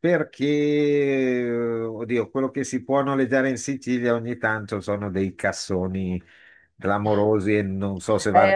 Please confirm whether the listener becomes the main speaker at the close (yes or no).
yes